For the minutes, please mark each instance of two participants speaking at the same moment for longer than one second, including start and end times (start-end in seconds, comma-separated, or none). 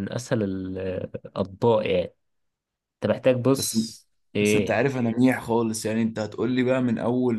none